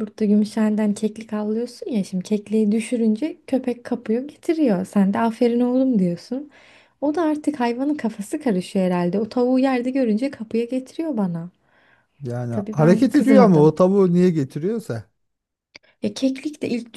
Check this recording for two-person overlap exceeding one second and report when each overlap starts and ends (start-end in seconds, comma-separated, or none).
12.5-13.8